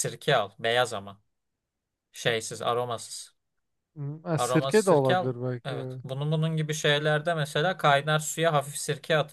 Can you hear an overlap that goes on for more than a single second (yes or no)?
yes